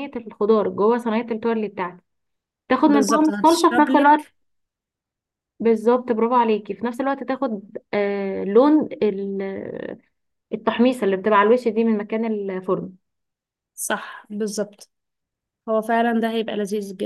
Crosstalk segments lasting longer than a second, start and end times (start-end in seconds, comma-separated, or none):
2.9-4.3